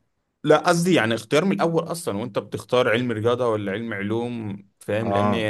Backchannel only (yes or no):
yes